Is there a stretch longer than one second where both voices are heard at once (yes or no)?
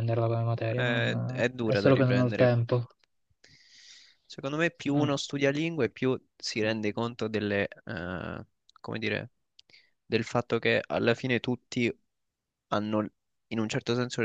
yes